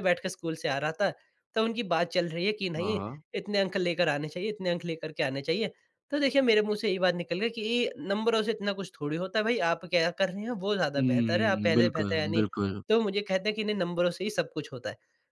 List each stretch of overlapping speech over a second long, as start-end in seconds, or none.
11.0-12.4